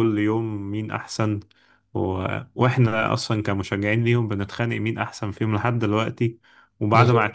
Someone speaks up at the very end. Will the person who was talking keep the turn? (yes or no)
yes